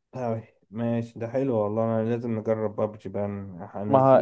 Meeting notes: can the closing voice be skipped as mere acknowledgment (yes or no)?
yes